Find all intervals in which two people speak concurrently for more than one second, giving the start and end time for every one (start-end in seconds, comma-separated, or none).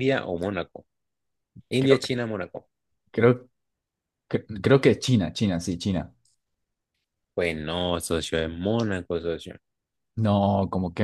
none